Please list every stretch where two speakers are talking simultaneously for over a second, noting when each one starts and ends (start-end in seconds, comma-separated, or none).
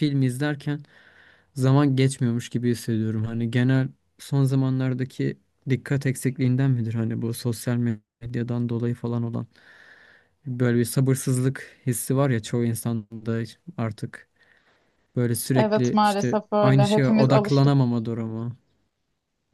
15.6-17.8